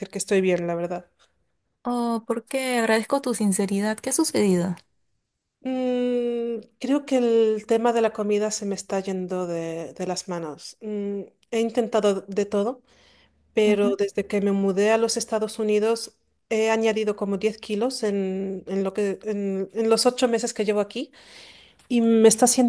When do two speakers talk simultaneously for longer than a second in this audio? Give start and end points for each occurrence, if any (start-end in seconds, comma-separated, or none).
none